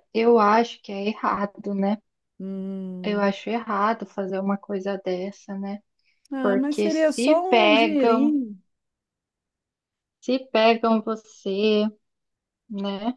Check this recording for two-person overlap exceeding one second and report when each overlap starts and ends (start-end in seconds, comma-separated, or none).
6.4-8.4